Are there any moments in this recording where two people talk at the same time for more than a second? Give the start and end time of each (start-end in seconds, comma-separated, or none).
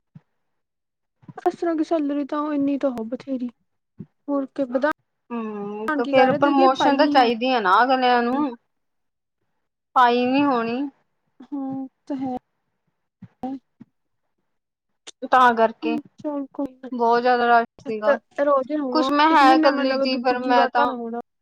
18.9-20.9